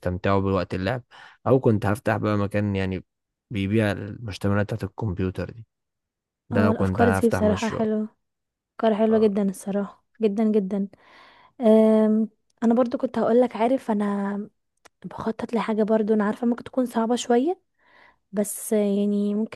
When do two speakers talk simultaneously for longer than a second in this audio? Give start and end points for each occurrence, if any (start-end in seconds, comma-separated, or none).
6.5-7.8